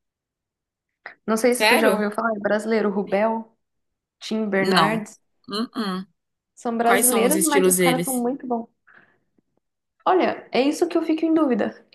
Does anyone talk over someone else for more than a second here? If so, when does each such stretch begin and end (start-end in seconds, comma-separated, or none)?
6.8-8.3